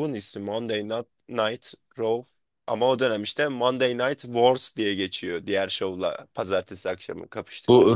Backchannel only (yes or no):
no